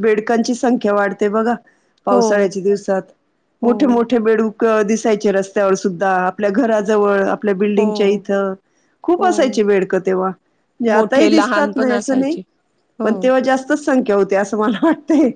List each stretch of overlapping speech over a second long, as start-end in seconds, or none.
10.9-12.4